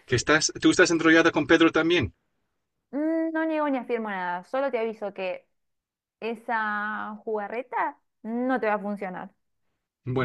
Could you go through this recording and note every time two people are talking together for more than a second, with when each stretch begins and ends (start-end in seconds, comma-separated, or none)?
none